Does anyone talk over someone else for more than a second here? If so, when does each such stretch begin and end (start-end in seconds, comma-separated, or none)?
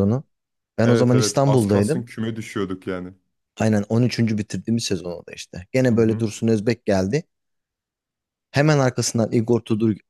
0.8-2.0